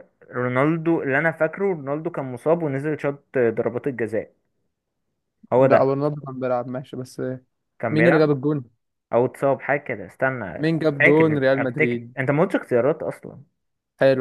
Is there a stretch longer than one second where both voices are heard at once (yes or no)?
yes